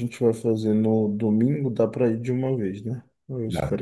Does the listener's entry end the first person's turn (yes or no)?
no